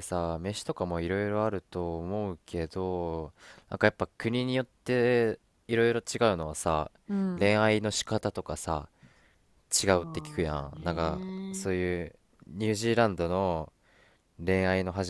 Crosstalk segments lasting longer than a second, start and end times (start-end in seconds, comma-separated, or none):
9.7-11.7